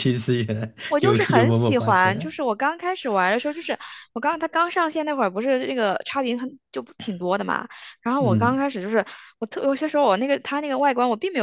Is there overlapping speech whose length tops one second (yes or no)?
yes